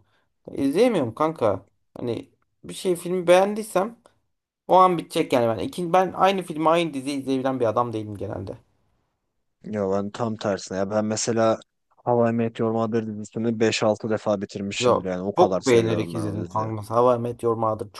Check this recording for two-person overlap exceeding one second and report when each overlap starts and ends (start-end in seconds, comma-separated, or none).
14.8-16.7